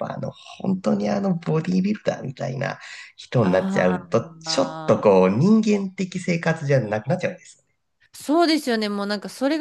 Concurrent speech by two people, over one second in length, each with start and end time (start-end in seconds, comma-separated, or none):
3.4-5.1